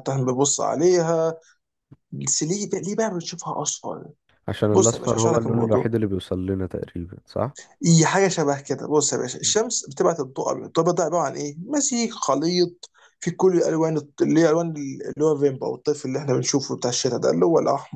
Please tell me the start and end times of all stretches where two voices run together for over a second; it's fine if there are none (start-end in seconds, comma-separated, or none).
4.7-6.0